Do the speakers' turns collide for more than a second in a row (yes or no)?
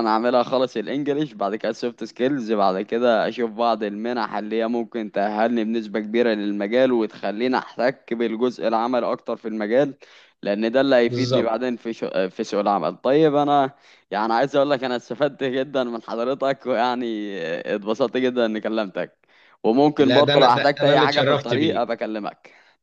yes